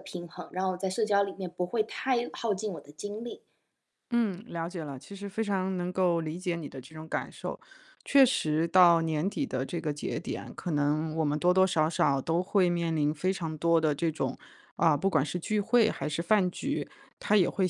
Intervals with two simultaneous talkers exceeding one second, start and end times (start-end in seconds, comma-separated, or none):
none